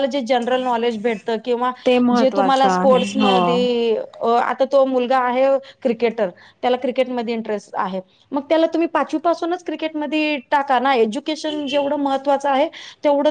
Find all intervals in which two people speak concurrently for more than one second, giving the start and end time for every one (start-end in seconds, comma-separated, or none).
2.3-3.5